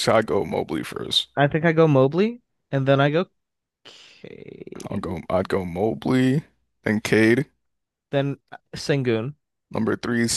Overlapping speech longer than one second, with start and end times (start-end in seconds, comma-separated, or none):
none